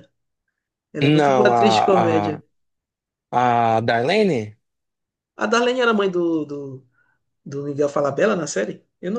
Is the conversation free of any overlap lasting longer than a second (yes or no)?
no